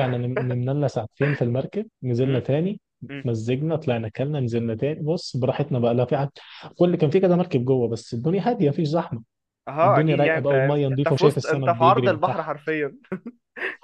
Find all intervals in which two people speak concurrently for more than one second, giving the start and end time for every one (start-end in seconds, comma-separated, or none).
9.8-12.5